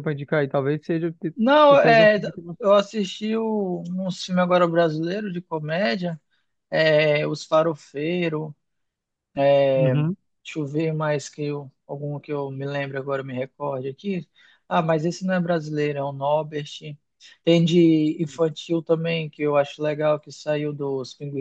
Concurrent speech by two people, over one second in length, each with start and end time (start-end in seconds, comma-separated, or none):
none